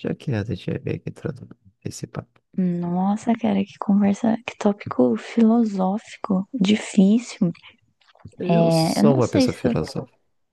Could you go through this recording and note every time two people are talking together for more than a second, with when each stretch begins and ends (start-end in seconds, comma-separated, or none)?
8.5-9.7